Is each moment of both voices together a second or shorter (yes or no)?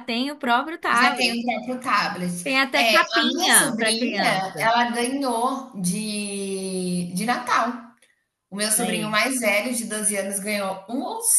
no